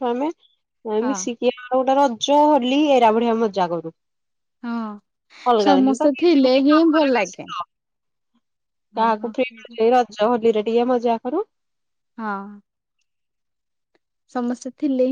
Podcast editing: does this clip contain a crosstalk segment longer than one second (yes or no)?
yes